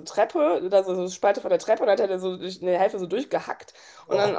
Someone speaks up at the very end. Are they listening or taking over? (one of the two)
listening